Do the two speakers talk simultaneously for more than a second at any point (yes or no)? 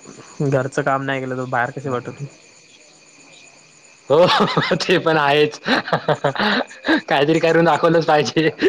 no